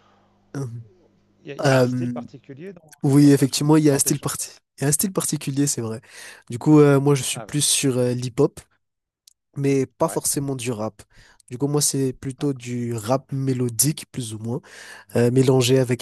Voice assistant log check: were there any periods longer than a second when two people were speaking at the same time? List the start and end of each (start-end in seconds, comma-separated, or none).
3.0-4.5